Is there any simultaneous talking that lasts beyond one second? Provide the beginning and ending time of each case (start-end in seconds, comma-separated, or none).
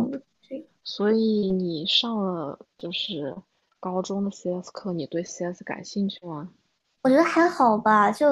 none